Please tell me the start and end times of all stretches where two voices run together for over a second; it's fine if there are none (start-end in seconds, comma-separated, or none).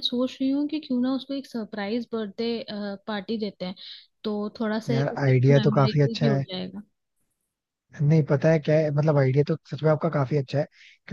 4.9-6.4